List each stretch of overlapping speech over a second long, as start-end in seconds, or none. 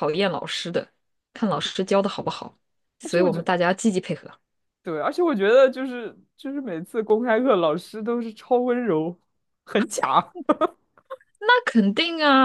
none